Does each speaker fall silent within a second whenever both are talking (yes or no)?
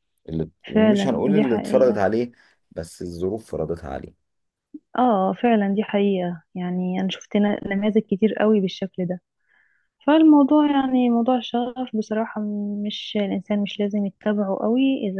no